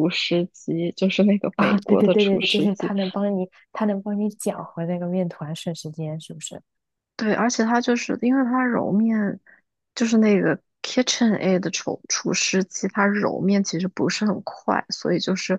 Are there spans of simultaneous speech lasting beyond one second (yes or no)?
yes